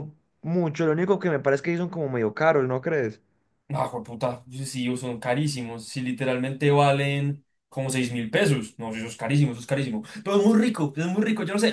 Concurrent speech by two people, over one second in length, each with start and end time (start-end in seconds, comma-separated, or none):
none